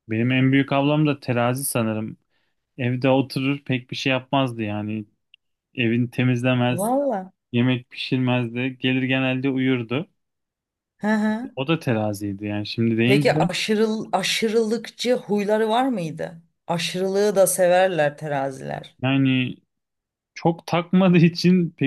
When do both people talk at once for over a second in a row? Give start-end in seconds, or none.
none